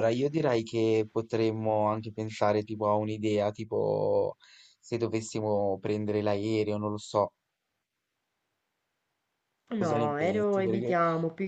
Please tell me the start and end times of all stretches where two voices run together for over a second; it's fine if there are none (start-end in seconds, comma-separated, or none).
9.8-11.0